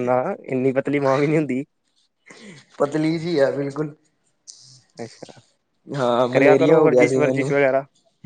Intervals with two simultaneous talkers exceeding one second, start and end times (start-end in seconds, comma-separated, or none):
6.3-7.5